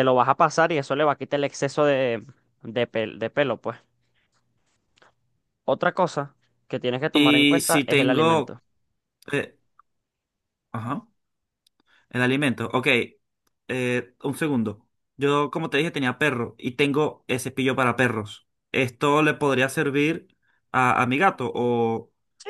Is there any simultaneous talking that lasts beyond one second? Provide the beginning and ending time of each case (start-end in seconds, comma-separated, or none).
7.1-8.6